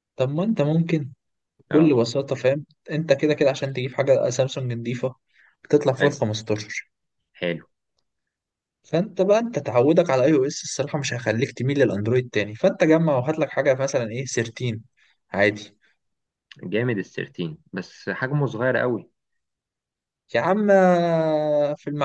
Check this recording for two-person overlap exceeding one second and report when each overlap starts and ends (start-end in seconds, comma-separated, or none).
none